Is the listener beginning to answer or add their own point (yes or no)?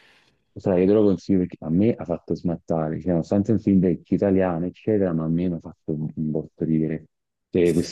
no